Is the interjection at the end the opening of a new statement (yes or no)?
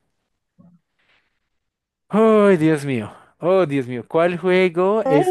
no